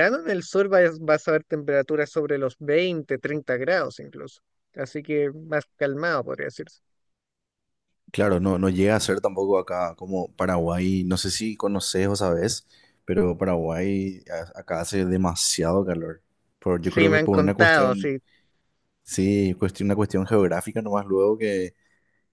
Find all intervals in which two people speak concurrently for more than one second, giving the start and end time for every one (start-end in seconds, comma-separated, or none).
16.8-18.1